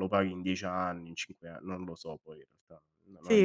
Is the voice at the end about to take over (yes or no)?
yes